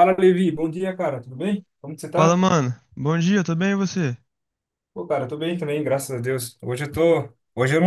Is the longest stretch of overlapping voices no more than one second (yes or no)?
yes